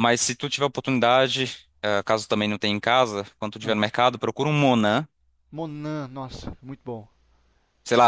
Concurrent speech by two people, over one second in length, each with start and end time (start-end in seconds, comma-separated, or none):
none